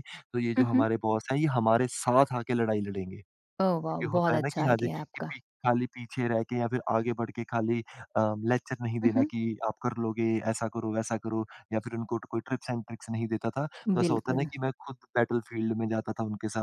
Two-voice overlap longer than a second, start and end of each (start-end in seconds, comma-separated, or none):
3.9-5.3